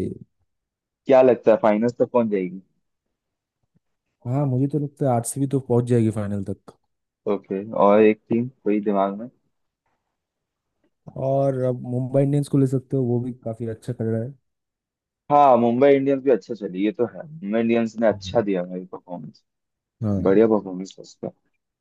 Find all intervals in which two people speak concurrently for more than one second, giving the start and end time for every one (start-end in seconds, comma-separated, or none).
none